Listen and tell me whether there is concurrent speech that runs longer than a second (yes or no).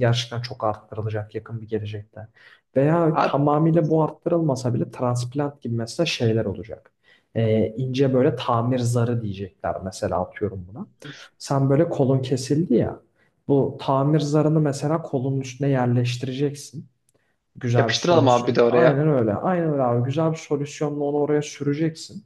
yes